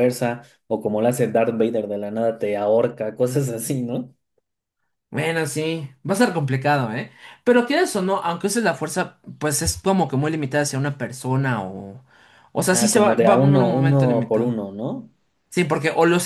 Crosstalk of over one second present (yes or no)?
yes